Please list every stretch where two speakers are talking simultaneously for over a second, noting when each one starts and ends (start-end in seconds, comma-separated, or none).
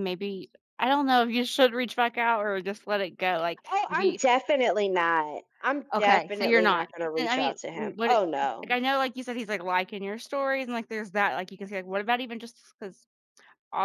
5.9-8.8